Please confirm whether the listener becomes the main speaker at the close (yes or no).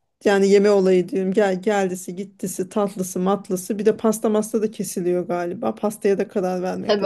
yes